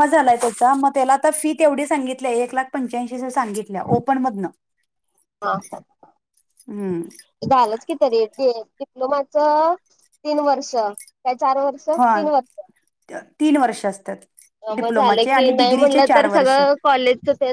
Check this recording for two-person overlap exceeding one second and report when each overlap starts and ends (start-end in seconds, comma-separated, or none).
14.8-16.6